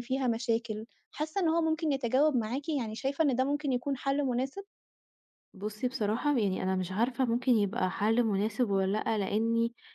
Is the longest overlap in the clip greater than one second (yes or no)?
no